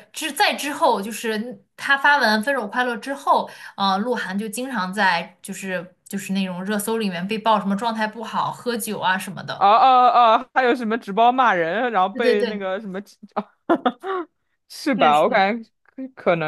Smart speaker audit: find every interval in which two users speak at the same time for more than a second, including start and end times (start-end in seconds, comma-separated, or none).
none